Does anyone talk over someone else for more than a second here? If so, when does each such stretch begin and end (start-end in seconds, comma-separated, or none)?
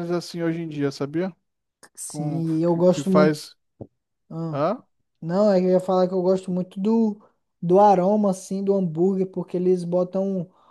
2.1-3.4